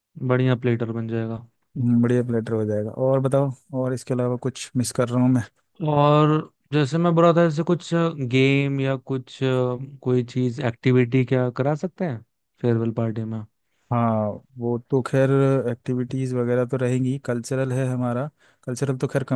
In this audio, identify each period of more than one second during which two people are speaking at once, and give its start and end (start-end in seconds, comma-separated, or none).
none